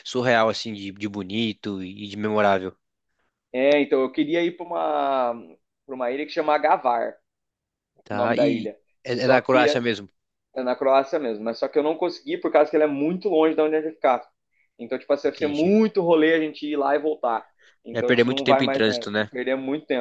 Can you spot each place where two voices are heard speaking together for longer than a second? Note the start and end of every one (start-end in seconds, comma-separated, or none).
17.9-19.3